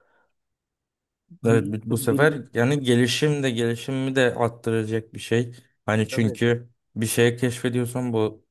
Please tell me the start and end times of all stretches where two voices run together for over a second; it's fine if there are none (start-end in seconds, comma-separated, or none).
1.5-3.1